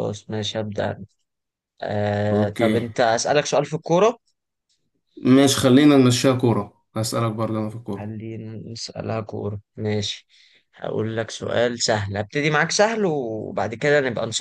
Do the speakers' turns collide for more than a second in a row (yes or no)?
no